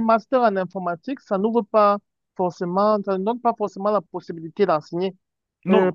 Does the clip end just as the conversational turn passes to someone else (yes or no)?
no